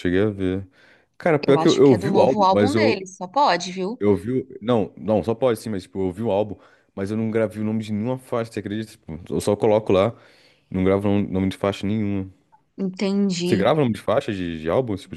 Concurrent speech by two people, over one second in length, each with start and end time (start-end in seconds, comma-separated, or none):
1.5-3.0